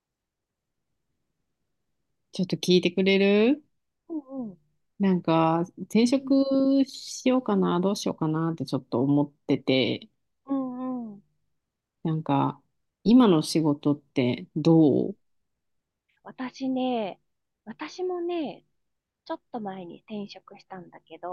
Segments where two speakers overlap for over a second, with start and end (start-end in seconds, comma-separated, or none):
none